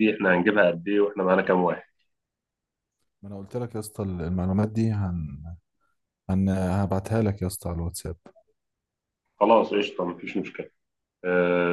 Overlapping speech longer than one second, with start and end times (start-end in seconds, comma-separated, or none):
none